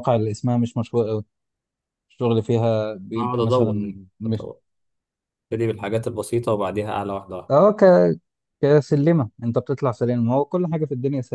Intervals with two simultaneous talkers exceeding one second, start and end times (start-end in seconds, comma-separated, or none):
3.2-4.5